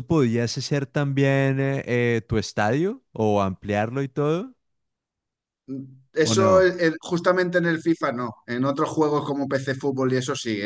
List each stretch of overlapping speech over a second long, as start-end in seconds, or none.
none